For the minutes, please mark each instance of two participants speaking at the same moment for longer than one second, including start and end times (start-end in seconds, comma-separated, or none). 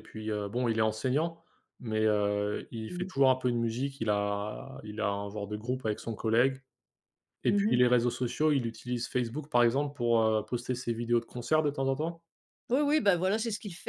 none